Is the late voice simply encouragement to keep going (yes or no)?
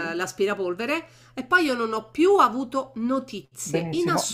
no